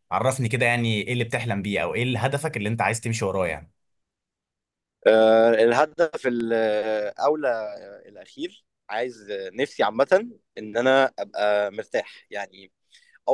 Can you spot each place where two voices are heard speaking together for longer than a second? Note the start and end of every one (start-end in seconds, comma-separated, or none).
none